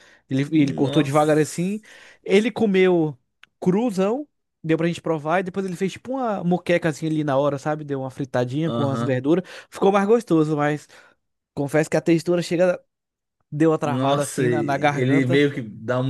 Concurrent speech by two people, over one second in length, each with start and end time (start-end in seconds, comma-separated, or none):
0.5-1.8, 13.8-15.4